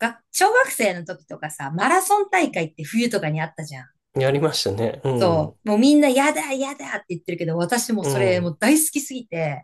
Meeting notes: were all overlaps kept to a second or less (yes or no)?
yes